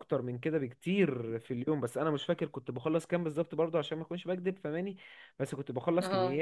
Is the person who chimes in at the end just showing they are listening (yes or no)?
yes